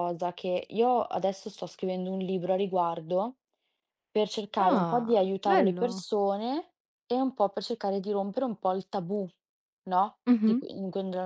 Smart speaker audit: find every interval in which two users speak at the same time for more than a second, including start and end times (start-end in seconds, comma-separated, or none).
4.6-6.0